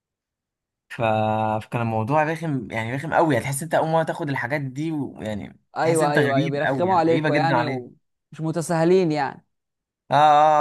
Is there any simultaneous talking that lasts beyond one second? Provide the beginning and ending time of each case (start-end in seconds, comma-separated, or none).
5.8-7.5